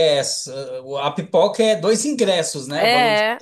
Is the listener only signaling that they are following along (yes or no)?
no